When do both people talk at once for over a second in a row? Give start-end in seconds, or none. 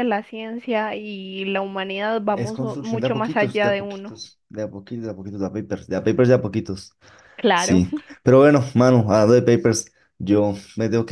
2.3-4.2